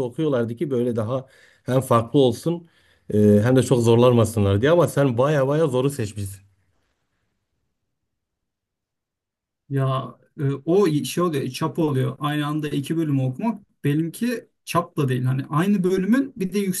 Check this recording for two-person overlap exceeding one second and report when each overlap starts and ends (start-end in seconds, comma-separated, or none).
none